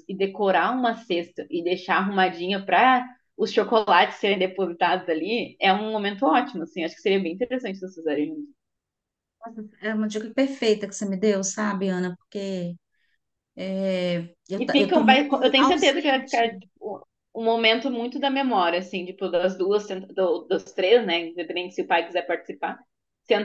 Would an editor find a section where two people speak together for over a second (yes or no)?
yes